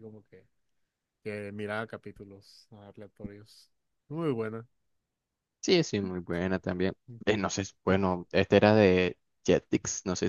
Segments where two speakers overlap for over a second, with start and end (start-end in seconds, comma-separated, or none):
none